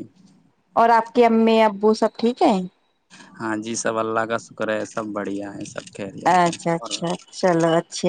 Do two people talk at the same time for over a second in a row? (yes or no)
no